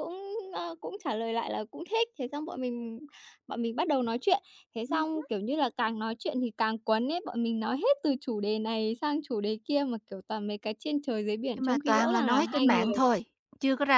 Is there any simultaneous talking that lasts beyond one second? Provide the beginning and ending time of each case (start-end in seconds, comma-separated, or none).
11.6-12.9